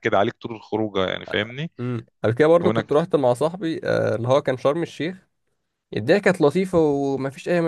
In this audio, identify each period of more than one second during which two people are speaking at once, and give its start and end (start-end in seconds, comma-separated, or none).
none